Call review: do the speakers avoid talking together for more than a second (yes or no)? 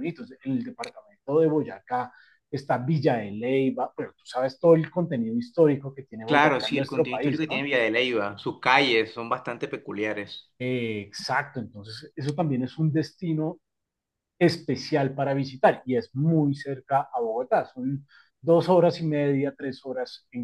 no